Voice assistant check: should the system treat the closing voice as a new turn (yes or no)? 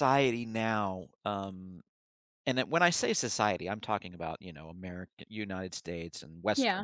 no